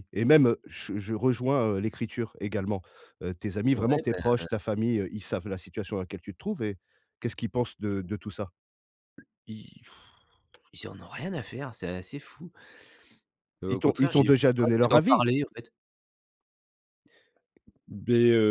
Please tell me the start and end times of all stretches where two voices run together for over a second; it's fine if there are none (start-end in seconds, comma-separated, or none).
13.7-15.2